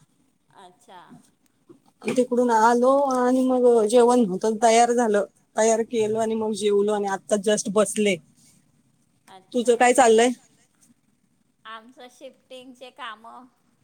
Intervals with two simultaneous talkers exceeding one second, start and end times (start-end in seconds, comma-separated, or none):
none